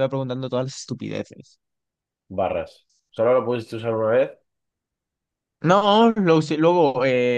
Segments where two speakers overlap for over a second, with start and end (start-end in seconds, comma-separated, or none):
none